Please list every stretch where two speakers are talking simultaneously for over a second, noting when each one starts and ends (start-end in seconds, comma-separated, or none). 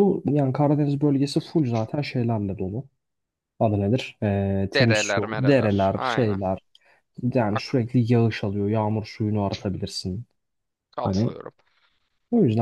4.7-6.4